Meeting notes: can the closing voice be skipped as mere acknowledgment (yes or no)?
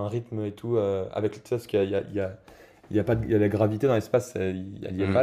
yes